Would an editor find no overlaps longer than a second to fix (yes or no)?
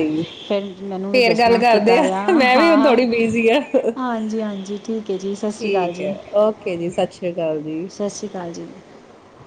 no